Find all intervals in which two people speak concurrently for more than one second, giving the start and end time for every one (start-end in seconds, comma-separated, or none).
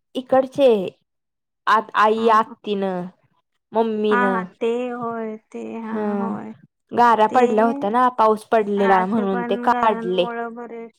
8.9-10.2